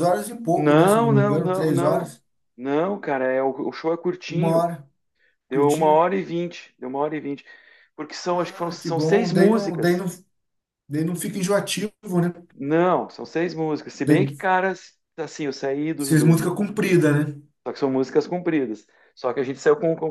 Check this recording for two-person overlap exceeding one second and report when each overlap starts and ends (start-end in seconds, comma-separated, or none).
0.5-2.2, 8.3-10.0